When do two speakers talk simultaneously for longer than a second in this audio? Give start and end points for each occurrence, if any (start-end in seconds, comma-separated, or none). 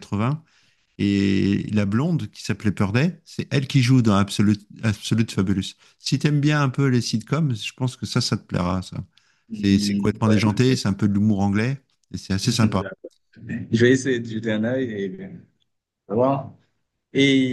9.5-10.8